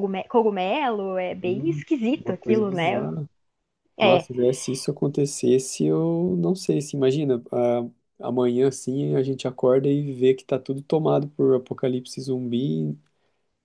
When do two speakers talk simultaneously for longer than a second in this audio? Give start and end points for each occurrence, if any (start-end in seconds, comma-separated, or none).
1.4-3.1